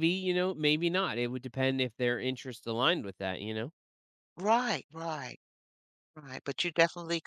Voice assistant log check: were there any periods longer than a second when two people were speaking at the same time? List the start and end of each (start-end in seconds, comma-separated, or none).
none